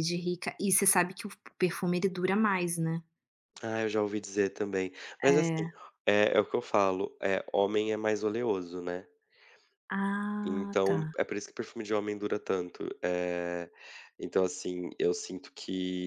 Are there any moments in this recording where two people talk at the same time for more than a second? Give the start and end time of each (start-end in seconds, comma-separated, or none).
none